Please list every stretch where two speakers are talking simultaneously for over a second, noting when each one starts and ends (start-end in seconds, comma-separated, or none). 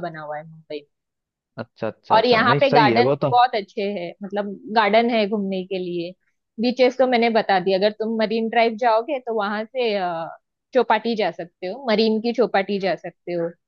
1.8-3.3